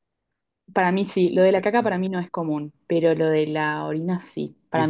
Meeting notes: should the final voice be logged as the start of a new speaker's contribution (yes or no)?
yes